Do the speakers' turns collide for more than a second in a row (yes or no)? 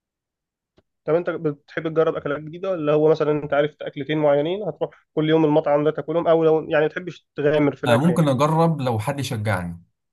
no